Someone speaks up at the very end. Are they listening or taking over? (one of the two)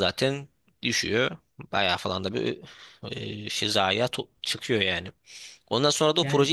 listening